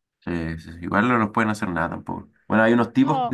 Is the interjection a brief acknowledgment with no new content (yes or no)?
yes